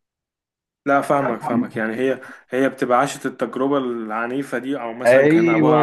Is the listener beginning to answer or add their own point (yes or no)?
no